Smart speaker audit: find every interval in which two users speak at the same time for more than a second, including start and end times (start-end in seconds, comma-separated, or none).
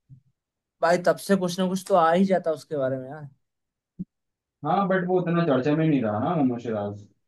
none